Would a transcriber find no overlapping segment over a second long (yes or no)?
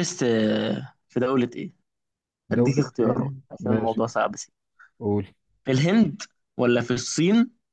no